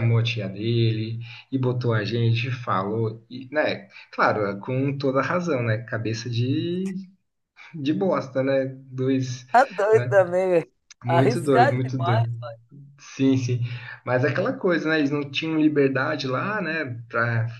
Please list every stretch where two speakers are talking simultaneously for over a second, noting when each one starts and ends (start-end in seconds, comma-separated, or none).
11.0-12.2